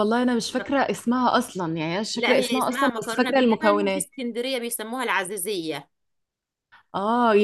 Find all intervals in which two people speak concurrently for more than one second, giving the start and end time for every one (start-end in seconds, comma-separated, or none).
2.1-4.0